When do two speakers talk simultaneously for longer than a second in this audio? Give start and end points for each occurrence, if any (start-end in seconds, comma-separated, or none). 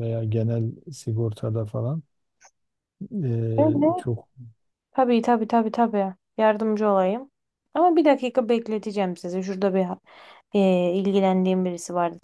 none